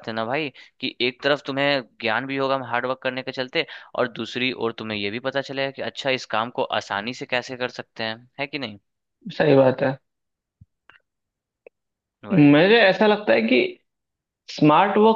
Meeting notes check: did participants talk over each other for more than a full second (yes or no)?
no